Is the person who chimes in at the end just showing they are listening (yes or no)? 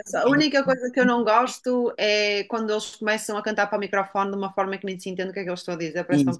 no